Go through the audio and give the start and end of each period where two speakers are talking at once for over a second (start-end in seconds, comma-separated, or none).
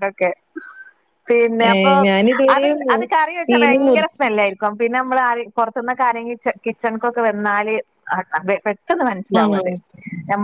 none